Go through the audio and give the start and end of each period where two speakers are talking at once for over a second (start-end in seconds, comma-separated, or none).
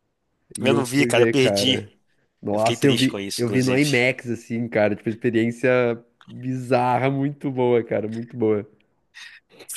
0.6-1.8, 2.5-3.9